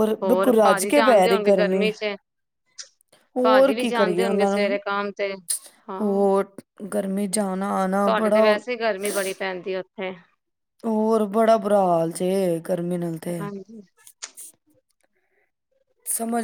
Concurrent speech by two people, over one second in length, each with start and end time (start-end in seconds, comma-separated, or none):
3.4-4.8